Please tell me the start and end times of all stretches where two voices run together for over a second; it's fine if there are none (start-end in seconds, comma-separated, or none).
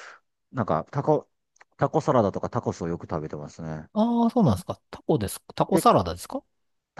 none